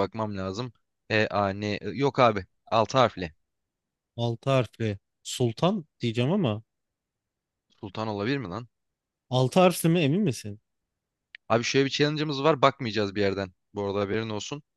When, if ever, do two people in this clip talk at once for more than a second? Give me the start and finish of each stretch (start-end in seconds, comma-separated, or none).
none